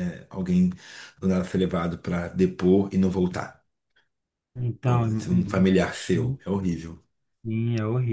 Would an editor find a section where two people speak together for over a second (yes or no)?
yes